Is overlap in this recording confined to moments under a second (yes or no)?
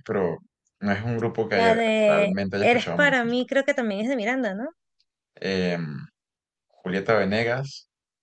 no